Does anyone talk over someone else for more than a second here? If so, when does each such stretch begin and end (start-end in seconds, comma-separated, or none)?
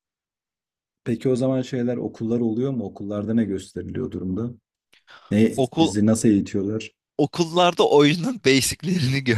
none